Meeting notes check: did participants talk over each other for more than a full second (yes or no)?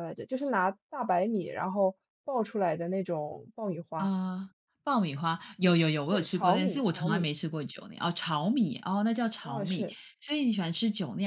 yes